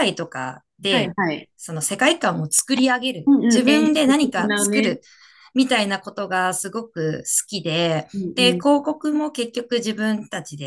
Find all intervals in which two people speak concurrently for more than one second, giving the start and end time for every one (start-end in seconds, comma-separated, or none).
3.3-5.0